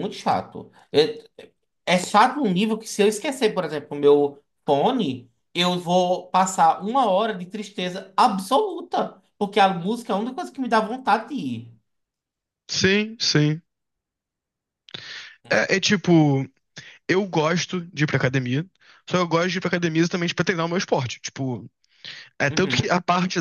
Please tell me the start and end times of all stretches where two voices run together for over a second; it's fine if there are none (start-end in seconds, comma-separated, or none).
none